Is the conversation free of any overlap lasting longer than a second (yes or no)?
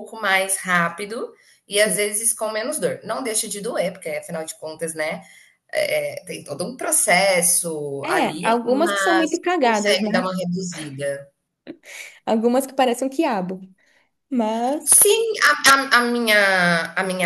no